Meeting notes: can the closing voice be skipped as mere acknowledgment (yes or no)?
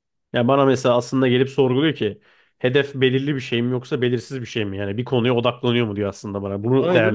no